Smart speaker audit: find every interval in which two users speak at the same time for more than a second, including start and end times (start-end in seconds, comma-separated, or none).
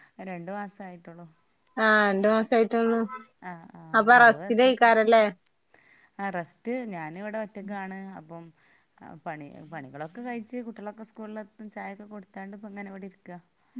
none